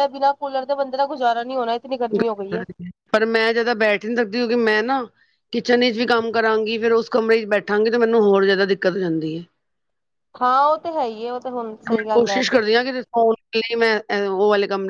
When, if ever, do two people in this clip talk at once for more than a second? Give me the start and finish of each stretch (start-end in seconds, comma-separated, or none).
none